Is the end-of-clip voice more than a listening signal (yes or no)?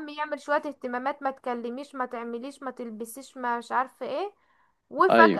no